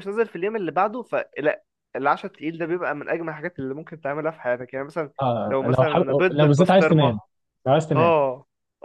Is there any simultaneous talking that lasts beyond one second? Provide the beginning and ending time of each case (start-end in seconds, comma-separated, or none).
5.5-7.2